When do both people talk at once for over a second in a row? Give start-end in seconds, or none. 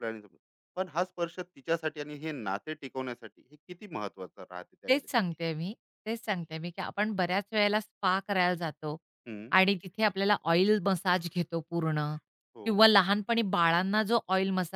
none